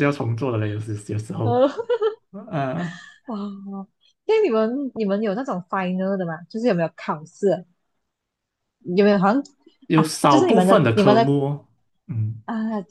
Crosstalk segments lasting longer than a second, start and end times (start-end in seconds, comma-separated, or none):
9.9-11.3